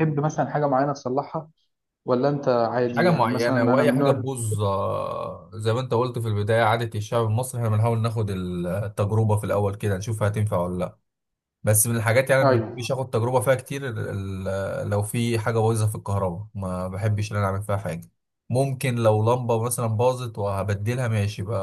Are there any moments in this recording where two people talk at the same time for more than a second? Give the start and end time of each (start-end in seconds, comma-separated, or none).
2.9-4.2